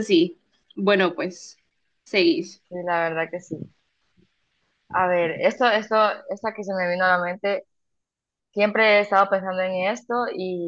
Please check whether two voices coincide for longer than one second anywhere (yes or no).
no